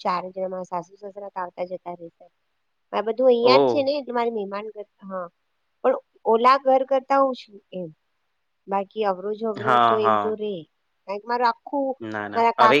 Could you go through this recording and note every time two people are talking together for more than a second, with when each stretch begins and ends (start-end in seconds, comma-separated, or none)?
none